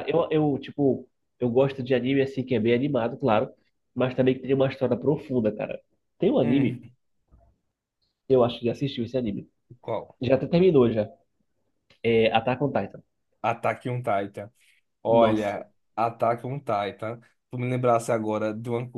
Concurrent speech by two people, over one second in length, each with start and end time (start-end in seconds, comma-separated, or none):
none